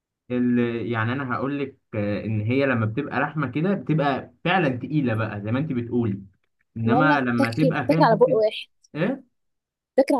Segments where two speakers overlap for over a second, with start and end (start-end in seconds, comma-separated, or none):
6.8-8.4